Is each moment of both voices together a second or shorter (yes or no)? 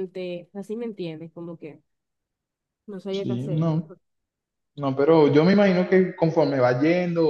yes